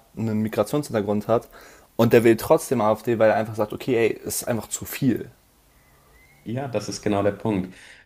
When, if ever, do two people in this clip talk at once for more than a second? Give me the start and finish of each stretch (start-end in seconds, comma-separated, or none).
none